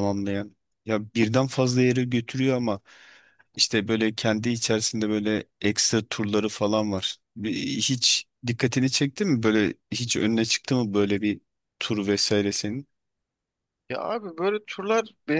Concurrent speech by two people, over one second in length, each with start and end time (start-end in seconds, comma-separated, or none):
none